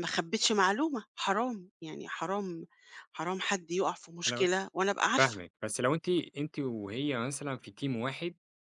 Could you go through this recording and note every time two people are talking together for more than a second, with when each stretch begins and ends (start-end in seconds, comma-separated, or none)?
none